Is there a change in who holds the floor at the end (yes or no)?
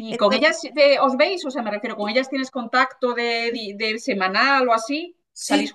yes